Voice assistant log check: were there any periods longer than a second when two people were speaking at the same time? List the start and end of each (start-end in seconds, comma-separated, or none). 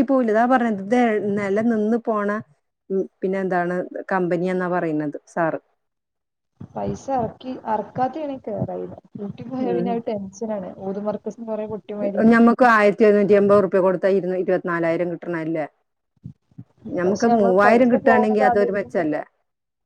17.0-19.1